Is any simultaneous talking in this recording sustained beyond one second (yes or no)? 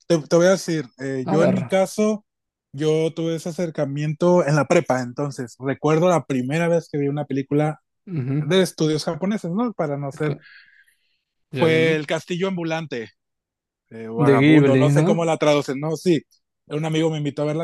yes